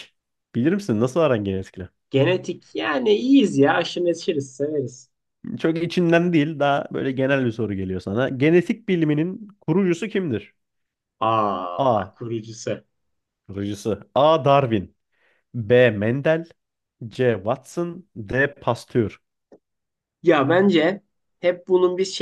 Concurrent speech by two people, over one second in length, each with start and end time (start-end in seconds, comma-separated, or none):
none